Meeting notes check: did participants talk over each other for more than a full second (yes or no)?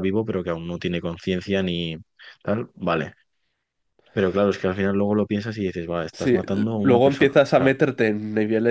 yes